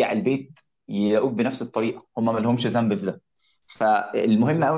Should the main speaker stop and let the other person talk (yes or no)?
no